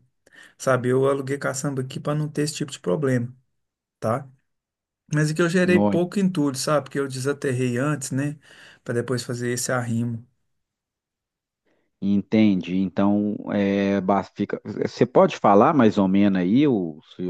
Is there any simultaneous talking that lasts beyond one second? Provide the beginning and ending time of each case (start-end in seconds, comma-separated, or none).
none